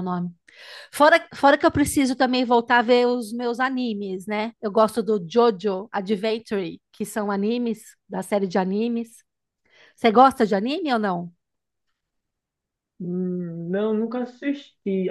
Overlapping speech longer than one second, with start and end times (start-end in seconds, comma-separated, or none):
none